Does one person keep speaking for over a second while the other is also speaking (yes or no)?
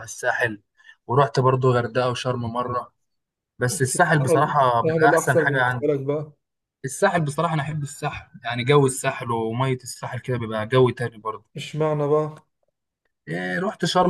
yes